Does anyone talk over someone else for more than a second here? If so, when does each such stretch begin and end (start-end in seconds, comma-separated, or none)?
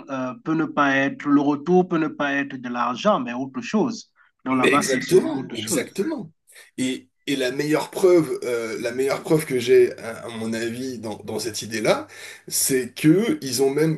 4.5-6.0